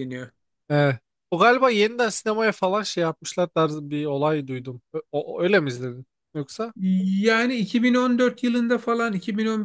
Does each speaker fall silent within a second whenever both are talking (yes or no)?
yes